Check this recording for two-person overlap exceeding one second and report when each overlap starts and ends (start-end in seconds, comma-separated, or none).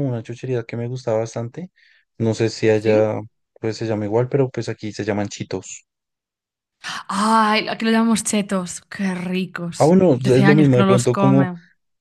9.8-11.5